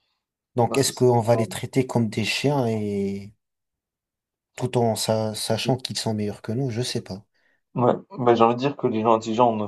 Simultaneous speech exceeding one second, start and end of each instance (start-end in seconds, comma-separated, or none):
none